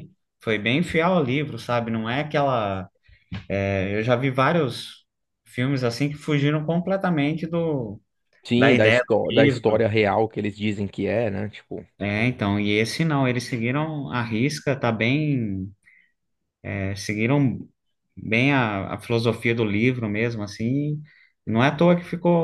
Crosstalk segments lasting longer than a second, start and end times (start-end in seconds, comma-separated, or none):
8.6-9.8